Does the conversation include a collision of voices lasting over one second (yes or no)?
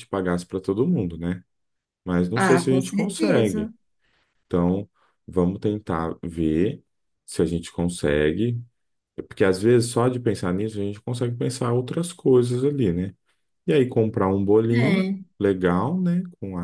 yes